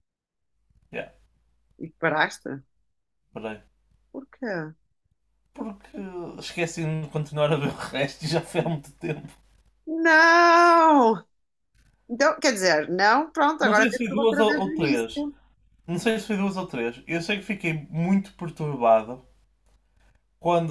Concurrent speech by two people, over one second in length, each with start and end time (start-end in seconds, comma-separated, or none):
13.6-15.3